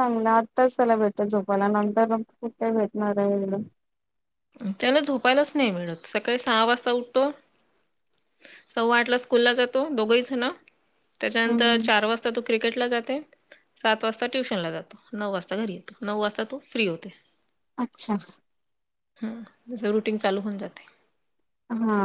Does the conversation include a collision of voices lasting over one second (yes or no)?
no